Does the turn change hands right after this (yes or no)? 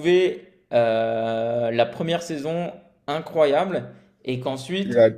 no